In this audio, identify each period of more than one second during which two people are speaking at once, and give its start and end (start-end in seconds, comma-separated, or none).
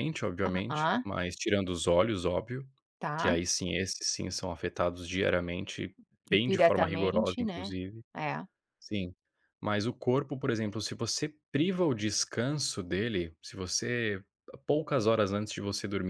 6.5-7.8